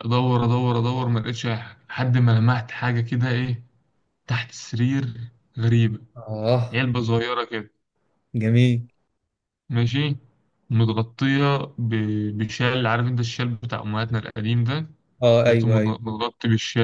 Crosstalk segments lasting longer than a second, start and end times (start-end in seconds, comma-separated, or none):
none